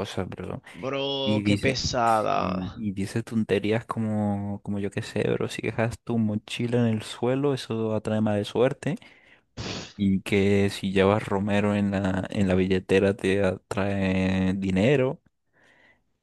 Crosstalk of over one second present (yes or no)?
yes